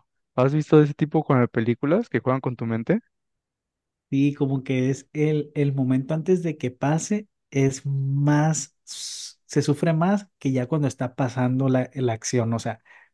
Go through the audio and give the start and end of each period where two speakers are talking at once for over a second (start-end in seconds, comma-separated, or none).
none